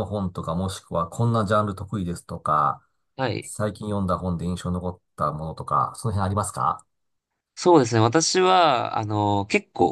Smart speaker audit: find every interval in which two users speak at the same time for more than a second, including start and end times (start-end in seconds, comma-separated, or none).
none